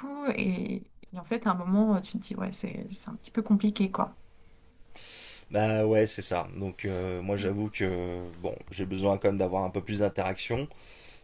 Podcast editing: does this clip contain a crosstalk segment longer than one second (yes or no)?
no